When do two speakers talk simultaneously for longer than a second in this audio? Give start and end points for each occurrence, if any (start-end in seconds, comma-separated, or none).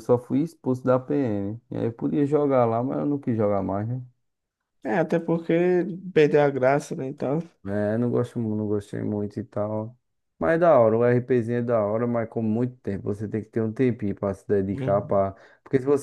none